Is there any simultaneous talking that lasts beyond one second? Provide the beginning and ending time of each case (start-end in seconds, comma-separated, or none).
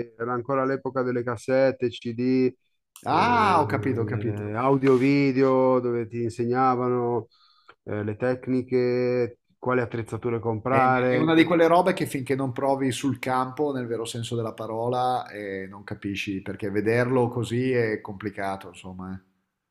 3.1-4.4